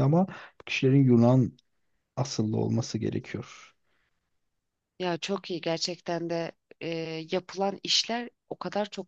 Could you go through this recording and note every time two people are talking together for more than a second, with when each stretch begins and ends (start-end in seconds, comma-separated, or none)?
none